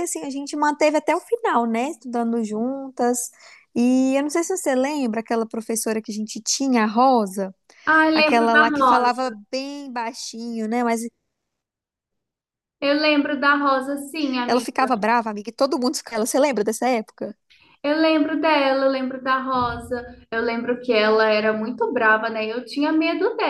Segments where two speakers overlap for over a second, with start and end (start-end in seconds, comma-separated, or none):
8.1-9.4